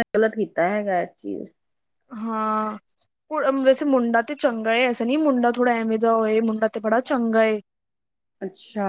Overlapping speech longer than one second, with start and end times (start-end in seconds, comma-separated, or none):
none